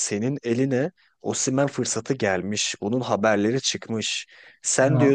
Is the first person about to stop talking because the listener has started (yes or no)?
no